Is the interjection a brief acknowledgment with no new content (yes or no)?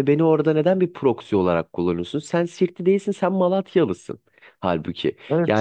no